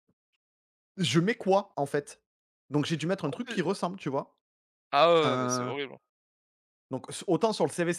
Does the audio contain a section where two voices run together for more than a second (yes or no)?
no